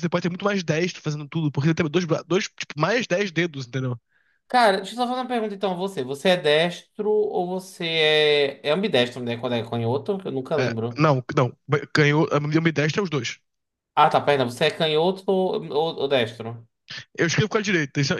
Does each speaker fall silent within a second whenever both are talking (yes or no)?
yes